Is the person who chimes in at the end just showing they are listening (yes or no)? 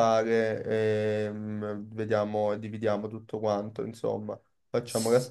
yes